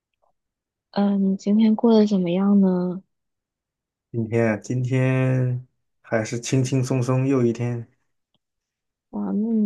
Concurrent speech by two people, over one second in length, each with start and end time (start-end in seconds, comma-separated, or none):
none